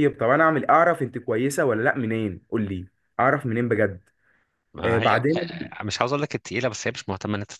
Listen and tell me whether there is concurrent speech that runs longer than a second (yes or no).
no